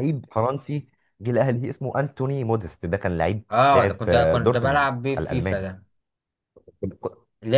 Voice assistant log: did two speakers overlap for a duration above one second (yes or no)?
yes